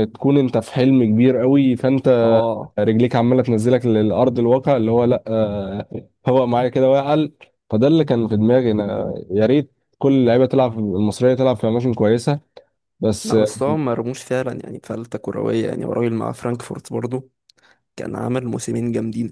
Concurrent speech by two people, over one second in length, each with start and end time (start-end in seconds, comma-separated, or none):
none